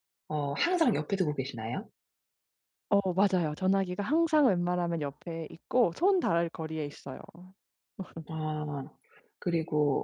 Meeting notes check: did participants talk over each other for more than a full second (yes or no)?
no